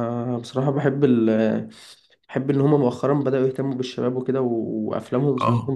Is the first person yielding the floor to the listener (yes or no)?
yes